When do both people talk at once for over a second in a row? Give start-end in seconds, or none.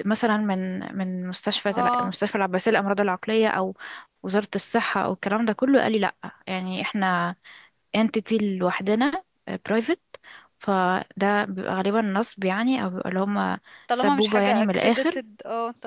13.9-15.2